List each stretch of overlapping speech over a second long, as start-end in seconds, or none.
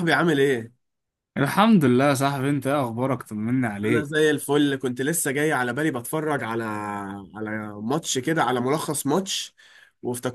none